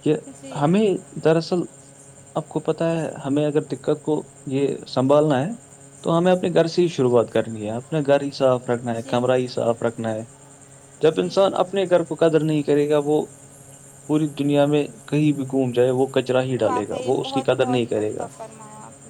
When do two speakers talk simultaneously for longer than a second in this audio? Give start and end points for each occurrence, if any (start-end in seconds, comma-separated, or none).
16.6-18.3